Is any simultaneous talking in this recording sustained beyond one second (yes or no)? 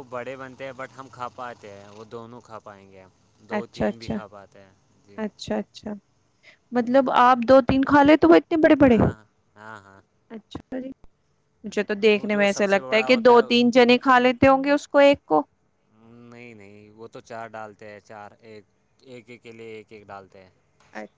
yes